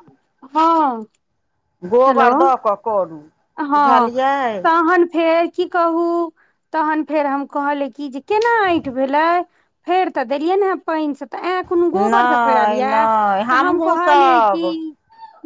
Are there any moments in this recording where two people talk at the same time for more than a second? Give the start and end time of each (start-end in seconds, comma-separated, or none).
12.0-14.6